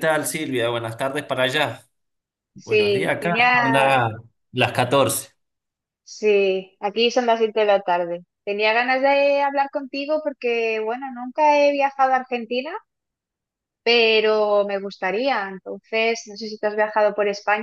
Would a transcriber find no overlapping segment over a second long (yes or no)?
no